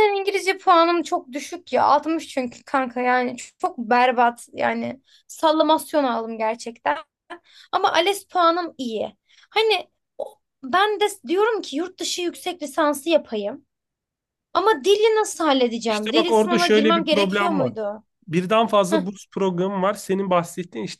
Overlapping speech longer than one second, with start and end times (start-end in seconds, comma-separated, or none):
15.9-17.7